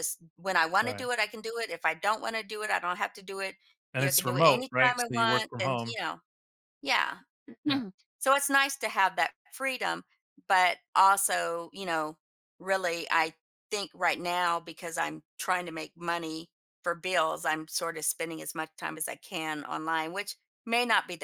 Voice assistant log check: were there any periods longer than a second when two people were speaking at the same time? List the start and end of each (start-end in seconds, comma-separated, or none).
4.0-6.0